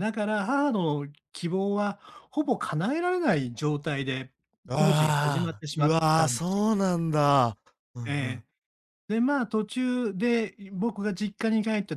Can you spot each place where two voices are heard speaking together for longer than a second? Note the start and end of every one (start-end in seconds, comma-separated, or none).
4.7-6.6